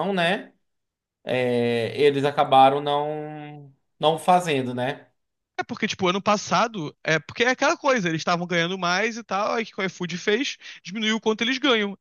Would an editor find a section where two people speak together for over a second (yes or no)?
no